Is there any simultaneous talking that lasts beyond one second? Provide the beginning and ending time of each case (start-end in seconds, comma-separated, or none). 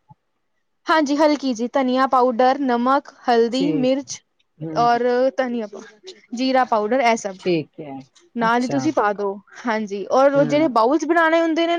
none